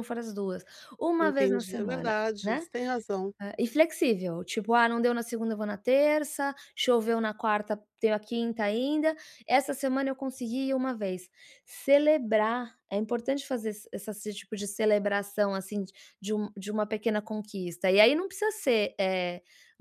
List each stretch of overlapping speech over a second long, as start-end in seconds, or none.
1.2-2.7